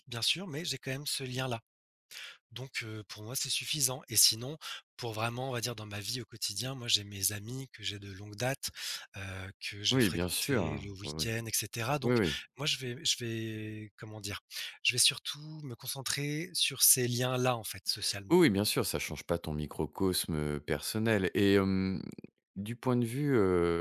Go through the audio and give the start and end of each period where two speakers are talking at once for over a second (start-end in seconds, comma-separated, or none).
9.9-11.3